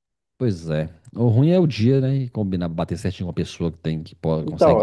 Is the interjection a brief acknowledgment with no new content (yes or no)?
no